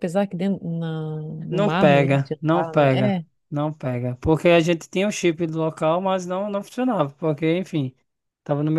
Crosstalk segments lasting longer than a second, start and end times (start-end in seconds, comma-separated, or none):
1.5-3.2